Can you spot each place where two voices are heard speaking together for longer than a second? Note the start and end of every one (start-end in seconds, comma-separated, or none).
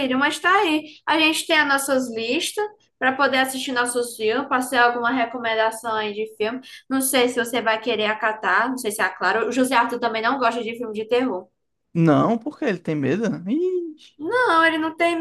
none